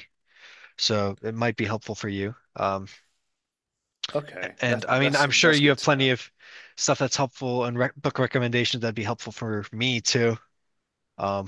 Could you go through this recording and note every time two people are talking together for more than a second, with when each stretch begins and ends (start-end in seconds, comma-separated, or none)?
4.6-6.1